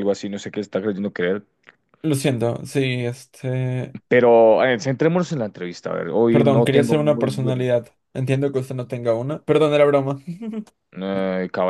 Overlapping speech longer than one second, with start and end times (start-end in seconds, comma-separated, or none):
6.3-7.7